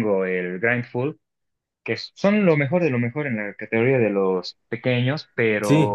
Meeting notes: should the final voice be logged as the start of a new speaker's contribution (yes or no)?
yes